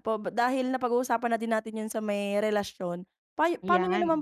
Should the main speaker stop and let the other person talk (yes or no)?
no